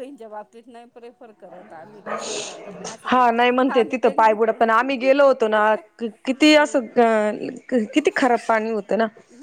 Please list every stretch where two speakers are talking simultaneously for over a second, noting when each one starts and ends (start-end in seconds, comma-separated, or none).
3.1-4.5